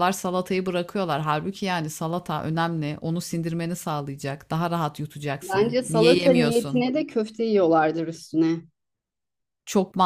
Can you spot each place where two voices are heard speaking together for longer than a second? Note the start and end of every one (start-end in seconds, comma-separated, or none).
5.4-6.9